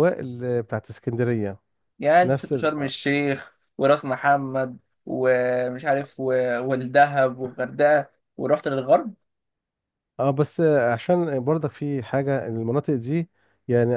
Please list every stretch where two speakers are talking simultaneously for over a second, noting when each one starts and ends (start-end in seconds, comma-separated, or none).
none